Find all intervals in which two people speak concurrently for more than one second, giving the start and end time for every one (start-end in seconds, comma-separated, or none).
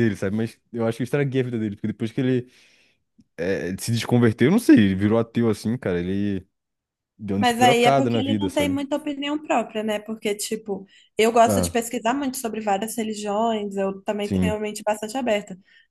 7.4-8.8